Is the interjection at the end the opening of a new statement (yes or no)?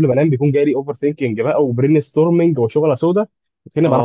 yes